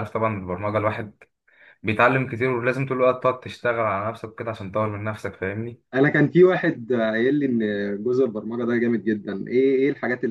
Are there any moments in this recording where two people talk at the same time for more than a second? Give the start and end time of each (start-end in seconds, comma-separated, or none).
none